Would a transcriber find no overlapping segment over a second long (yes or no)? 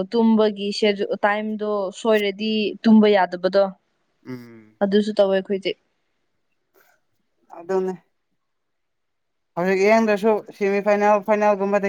yes